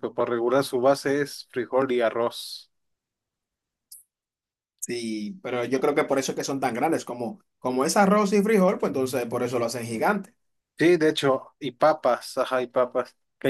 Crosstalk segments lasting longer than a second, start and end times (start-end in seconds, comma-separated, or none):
none